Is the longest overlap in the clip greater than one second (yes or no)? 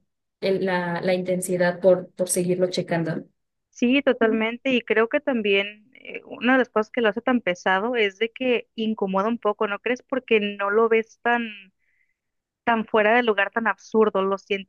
no